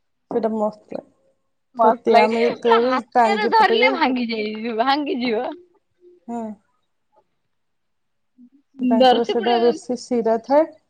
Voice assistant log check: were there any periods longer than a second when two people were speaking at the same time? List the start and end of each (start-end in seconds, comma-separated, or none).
1.8-4.0